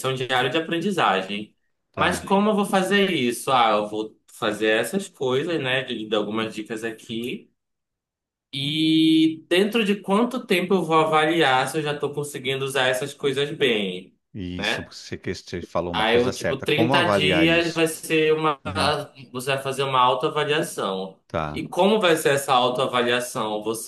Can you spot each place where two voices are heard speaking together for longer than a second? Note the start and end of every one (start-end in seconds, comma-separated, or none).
15.9-17.9